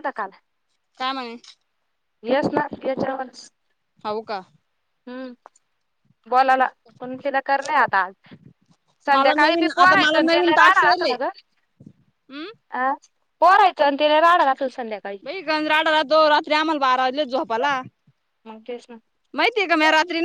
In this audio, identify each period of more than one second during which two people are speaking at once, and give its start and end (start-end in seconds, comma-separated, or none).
9.1-11.1